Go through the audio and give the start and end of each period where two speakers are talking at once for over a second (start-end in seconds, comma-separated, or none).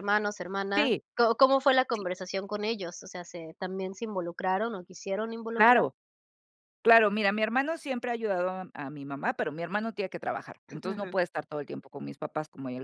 none